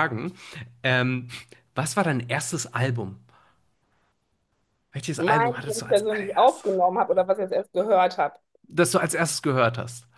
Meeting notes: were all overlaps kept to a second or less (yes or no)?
no